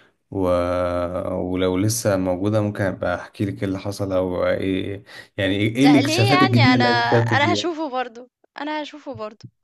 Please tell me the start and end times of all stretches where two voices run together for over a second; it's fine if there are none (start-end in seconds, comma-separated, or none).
5.8-7.7